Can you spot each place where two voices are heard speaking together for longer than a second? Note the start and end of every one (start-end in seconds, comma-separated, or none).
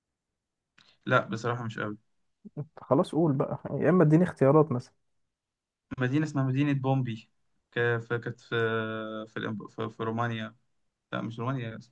none